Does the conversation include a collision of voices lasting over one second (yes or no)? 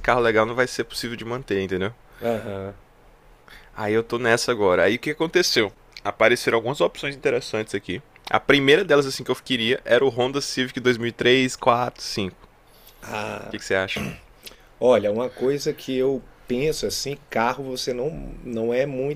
no